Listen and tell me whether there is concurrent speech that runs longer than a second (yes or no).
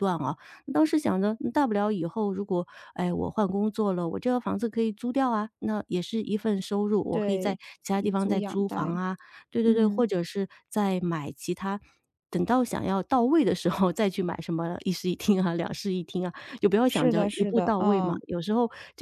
yes